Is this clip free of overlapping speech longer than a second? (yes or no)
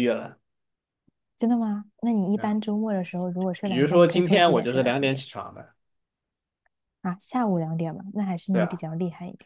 no